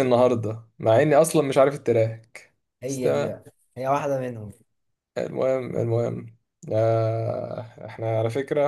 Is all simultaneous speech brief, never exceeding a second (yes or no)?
yes